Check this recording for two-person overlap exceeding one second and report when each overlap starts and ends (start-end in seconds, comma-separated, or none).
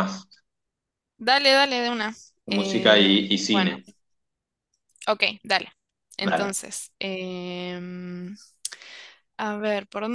2.5-3.7